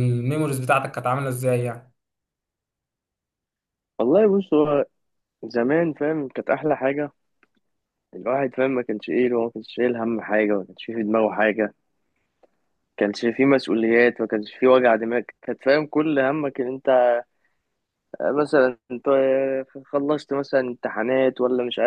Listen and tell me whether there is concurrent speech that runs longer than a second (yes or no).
no